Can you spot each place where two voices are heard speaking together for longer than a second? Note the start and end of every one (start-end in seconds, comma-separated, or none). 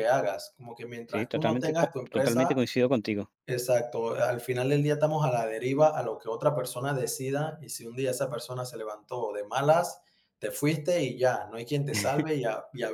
1.1-2.6